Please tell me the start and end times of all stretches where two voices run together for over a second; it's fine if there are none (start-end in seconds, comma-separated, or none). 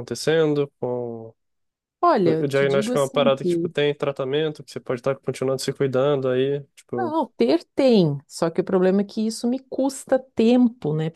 2.4-3.7